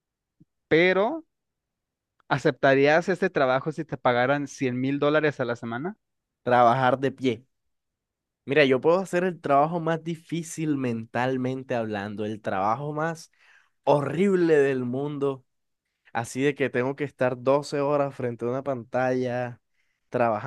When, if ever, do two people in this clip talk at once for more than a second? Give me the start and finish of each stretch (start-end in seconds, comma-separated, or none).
none